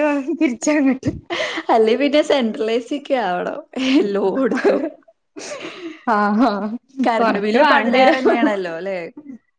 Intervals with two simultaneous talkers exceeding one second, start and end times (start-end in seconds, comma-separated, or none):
7.2-8.4